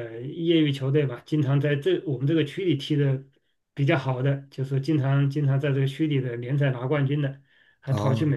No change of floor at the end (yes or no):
yes